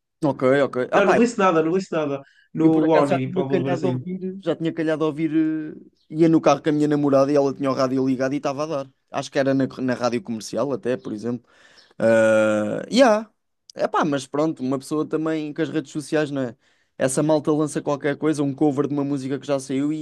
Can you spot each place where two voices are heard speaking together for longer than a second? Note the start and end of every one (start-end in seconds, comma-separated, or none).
2.6-4.0